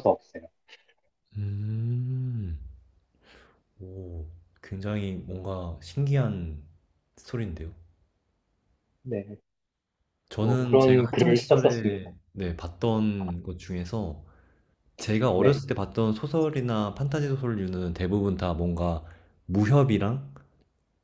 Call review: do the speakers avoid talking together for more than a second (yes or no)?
no